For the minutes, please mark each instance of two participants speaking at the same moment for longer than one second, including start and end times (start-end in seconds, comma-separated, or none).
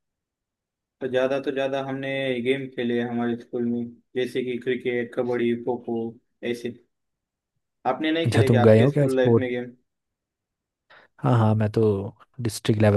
8.2-9.5